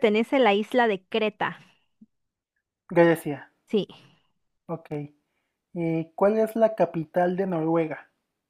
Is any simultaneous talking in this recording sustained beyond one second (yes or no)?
no